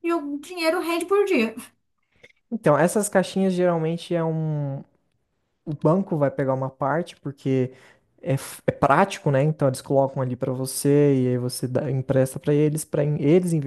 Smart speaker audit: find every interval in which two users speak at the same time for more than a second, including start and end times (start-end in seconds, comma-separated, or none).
none